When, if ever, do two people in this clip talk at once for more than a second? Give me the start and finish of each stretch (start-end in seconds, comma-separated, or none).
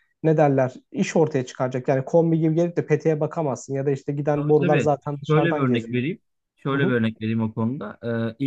4.3-6.0